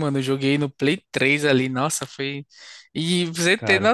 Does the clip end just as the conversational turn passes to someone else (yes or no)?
no